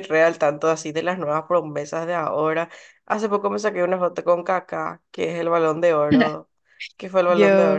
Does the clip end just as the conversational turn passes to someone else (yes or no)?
no